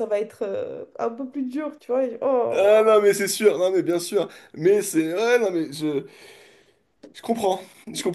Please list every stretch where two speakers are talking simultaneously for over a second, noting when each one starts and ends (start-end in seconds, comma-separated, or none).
none